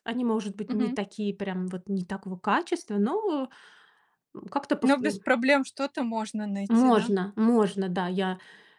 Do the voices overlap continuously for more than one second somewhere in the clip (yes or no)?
no